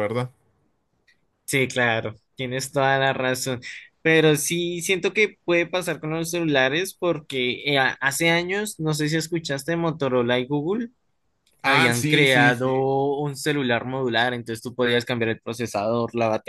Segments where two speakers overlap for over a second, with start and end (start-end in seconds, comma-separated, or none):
11.6-12.9